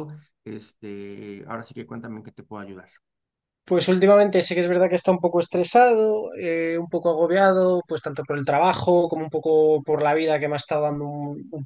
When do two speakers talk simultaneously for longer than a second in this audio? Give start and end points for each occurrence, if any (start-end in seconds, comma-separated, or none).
none